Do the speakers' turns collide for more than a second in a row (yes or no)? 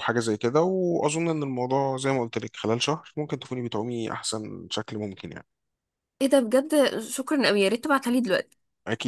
no